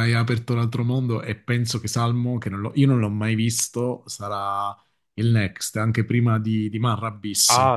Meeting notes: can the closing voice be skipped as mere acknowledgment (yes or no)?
no